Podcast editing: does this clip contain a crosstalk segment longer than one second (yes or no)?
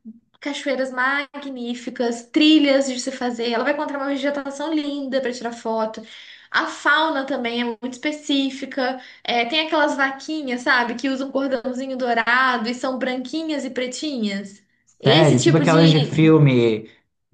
yes